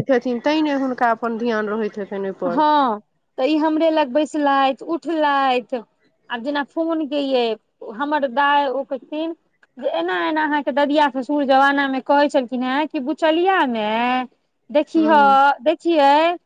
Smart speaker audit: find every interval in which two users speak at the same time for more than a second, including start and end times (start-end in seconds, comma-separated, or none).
none